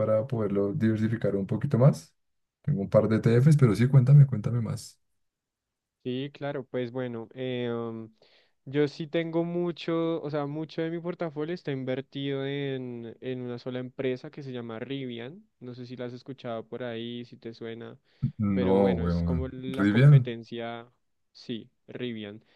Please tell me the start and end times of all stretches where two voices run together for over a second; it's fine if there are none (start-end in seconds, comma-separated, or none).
18.5-20.3